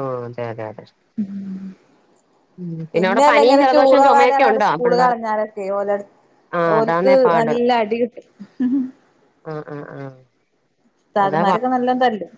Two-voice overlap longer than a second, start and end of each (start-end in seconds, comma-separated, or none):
3.1-5.1